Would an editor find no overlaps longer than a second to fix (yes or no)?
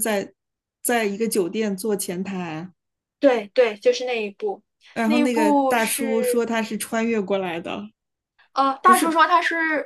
no